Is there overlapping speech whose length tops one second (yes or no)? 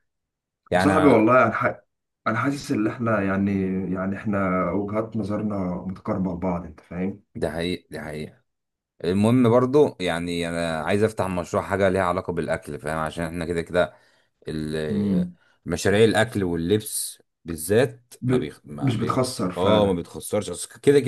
yes